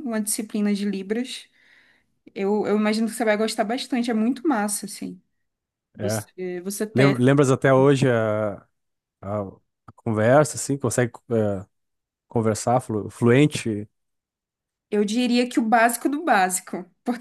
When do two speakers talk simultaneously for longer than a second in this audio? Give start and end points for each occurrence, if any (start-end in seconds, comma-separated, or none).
none